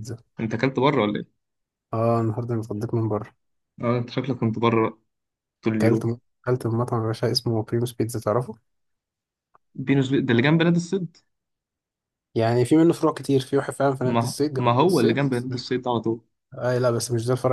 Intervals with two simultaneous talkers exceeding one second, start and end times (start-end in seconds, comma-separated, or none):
14.0-15.2